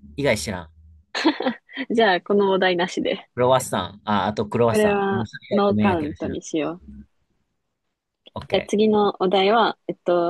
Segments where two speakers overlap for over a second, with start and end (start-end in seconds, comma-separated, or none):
4.7-6.4